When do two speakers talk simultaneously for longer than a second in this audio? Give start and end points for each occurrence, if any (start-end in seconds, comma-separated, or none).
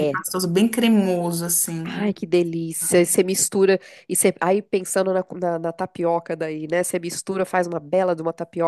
none